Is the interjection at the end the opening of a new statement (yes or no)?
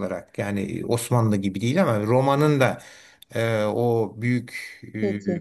no